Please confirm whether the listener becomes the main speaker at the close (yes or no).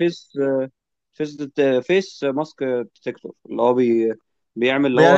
yes